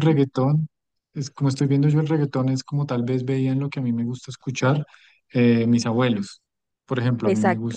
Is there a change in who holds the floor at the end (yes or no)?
no